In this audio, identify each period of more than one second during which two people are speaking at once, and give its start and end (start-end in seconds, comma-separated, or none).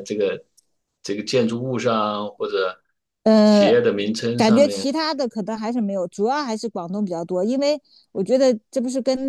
none